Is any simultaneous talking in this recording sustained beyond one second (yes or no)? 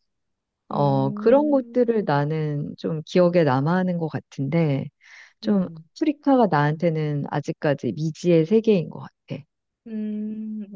yes